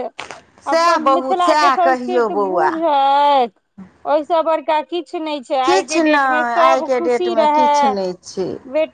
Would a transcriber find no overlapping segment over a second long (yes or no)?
no